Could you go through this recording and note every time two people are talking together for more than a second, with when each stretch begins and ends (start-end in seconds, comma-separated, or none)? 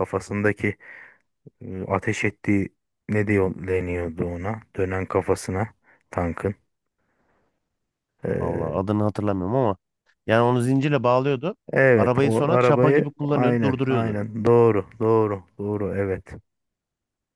11.9-14.2